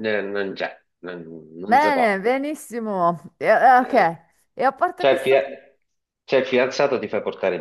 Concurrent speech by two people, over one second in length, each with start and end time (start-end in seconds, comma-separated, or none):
none